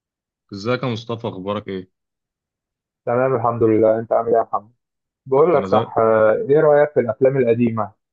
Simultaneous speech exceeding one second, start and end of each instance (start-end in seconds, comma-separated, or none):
none